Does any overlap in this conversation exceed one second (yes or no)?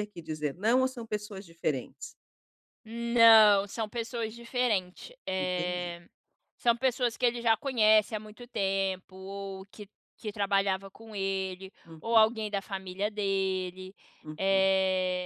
no